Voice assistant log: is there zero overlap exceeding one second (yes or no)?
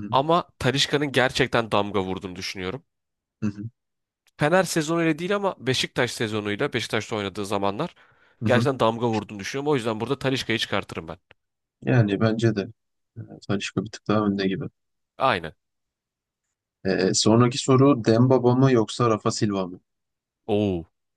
yes